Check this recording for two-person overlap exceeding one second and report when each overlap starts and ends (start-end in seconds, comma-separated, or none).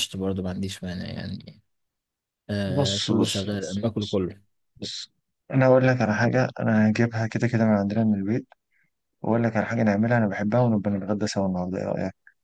2.6-4.2